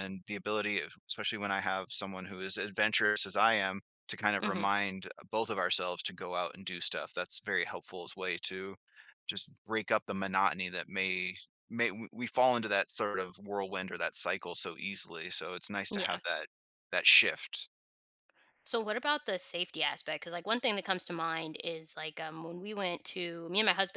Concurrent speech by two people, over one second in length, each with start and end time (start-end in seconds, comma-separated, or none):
none